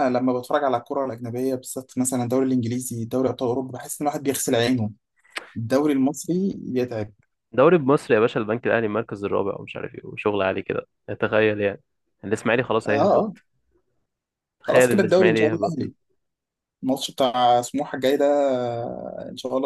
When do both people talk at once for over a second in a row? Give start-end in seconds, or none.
14.6-15.9